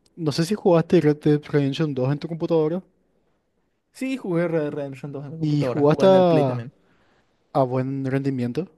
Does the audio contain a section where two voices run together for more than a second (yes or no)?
yes